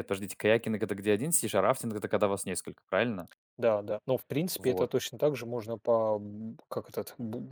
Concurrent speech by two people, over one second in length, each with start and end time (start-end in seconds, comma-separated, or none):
none